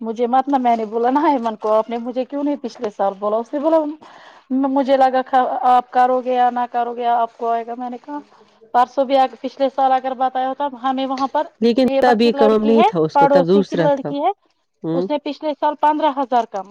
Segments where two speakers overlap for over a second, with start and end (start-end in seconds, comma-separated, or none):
11.8-14.1